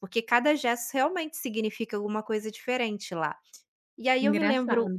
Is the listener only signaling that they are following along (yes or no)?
yes